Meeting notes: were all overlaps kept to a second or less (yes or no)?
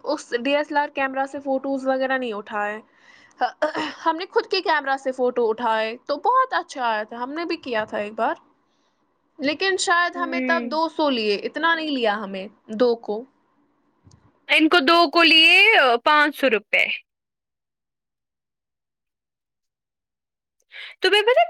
yes